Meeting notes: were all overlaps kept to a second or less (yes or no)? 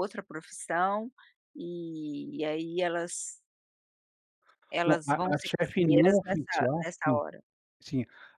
no